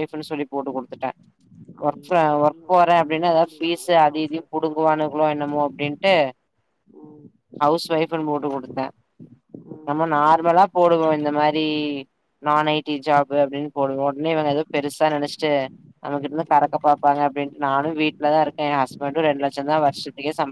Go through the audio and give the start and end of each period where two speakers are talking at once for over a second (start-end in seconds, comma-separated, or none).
1.9-4.9